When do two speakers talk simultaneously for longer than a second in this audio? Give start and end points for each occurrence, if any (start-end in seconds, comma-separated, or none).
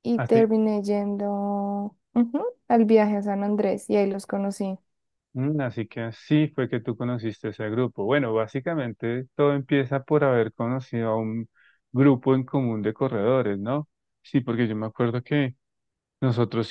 none